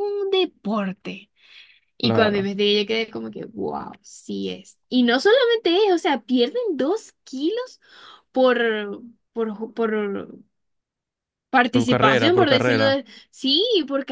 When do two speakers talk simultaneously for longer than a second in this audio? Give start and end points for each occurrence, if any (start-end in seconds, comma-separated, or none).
11.7-12.9